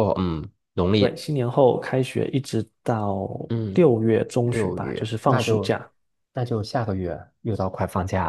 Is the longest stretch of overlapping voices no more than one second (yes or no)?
no